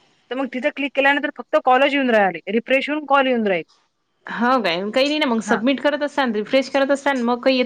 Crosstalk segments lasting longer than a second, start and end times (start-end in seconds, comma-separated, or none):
none